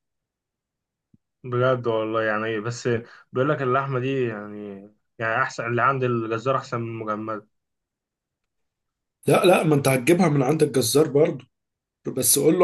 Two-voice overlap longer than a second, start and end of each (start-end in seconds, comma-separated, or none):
none